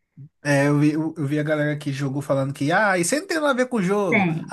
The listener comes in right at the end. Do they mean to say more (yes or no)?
no